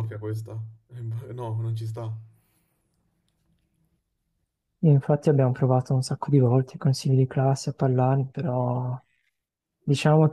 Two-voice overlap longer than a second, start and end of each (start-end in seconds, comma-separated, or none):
none